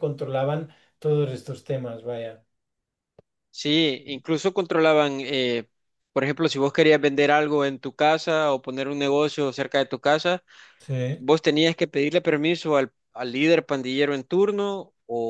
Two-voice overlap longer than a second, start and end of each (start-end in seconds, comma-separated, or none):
none